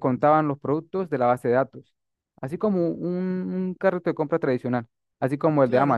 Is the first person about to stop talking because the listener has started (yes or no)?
yes